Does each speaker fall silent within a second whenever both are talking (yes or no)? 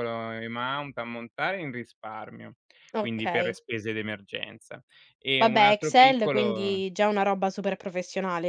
no